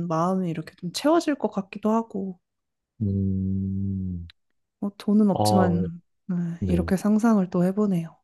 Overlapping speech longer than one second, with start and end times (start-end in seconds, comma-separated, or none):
none